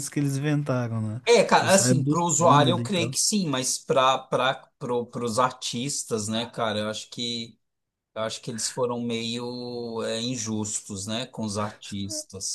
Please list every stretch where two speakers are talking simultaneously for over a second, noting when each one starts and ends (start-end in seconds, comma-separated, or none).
1.6-3.1